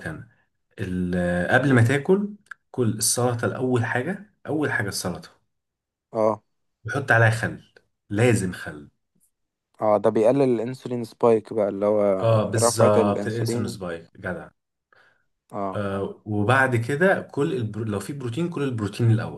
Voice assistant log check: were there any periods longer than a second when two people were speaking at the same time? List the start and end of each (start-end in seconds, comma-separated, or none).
12.6-13.8